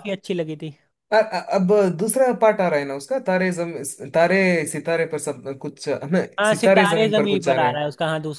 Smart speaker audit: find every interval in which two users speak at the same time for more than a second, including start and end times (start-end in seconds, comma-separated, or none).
6.4-7.8